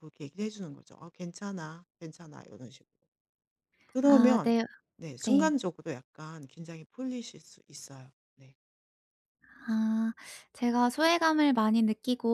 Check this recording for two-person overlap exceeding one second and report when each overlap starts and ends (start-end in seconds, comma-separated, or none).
none